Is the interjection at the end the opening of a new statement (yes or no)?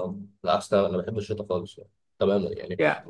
no